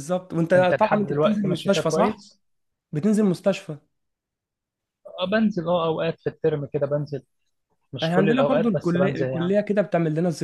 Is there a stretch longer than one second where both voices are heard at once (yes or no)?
yes